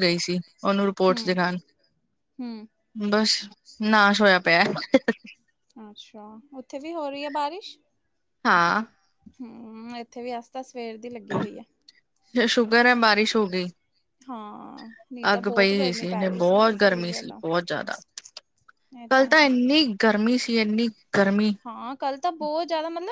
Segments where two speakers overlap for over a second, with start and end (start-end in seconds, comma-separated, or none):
15.3-17.4